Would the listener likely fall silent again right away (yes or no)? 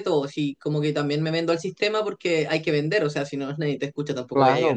no